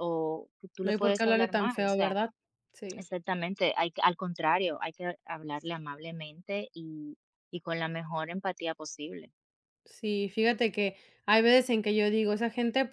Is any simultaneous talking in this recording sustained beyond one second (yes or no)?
yes